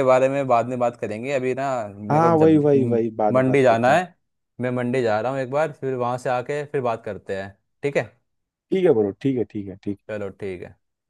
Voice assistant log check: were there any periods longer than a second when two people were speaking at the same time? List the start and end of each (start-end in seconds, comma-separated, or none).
2.1-4.0